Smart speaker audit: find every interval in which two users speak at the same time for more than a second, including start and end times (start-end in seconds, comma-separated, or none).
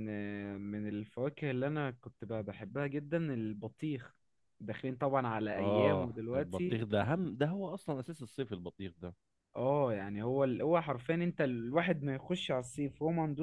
5.6-6.8